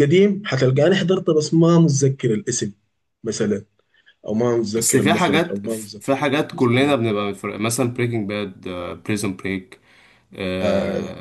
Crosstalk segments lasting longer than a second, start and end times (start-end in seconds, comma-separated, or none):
4.8-7.0